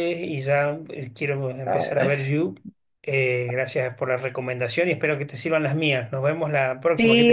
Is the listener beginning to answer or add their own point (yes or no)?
yes